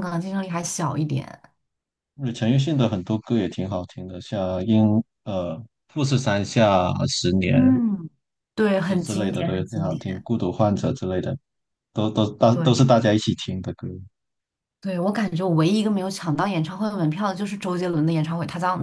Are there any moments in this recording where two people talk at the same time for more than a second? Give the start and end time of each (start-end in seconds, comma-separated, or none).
8.8-10.3